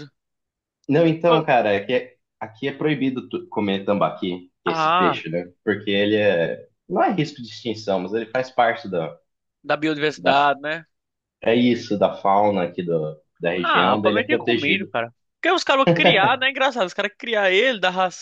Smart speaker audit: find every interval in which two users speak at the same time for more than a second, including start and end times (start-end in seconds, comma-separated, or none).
13.6-14.9